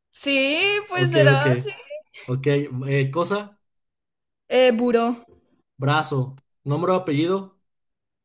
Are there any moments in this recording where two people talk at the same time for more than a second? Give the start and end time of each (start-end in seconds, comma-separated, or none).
none